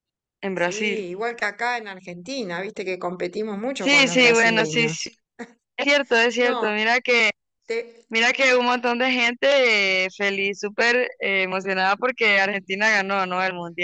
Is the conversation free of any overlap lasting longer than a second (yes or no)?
no